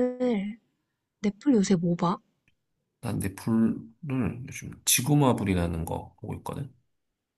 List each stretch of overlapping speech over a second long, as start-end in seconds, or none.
none